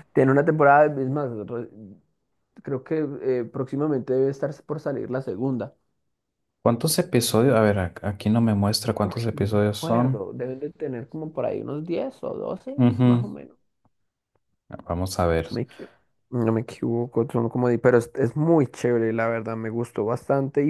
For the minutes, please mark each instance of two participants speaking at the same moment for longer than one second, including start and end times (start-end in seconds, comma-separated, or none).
9.0-10.2